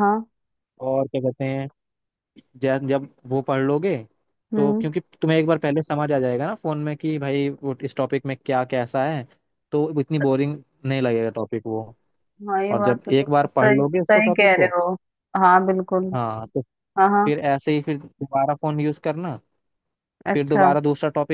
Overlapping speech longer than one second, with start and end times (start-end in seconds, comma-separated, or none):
12.7-14.7